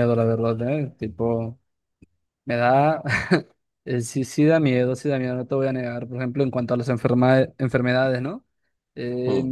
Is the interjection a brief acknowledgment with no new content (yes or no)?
yes